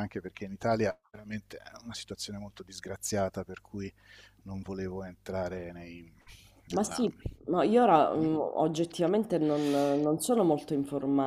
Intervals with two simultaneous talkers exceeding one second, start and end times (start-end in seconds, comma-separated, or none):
none